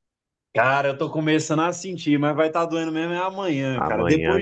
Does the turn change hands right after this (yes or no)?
yes